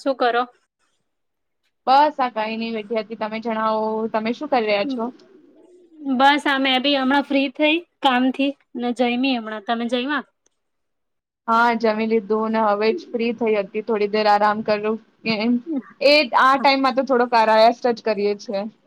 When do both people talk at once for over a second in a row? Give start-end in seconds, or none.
none